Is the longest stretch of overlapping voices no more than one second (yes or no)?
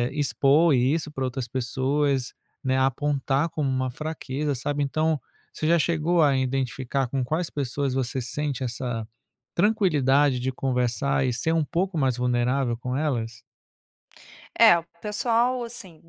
yes